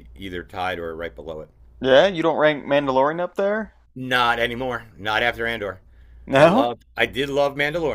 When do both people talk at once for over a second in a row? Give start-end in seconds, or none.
none